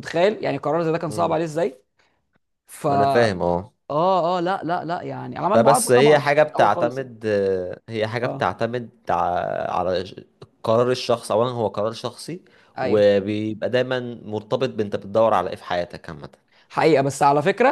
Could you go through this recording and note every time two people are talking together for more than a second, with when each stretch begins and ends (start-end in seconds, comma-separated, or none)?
5.5-7.1